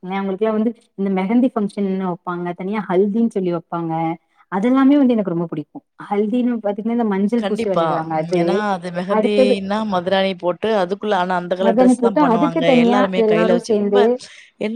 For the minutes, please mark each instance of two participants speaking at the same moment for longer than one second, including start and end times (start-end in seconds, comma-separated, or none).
11.7-14.0